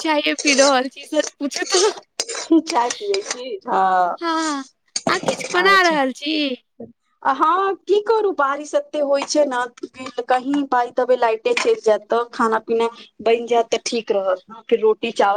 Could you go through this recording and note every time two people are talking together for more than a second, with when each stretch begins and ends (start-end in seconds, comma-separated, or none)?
none